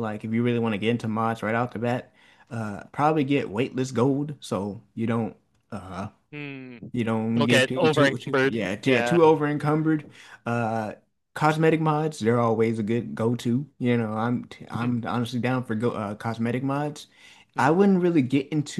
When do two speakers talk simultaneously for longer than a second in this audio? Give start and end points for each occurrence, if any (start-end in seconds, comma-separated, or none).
7.3-9.2